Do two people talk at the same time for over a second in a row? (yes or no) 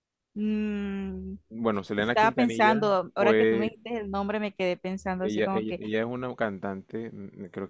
yes